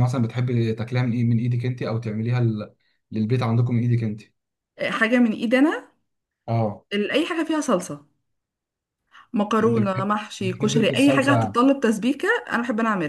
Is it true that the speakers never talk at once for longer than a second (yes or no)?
no